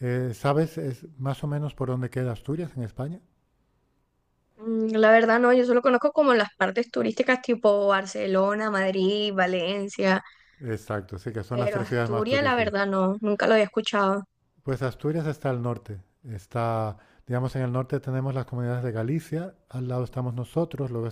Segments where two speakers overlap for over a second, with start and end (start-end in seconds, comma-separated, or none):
11.5-12.7